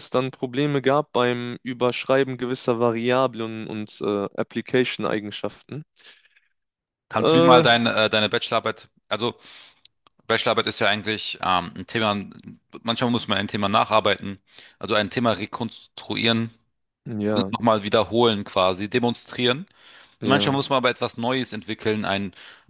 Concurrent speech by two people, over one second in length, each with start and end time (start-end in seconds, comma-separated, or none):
none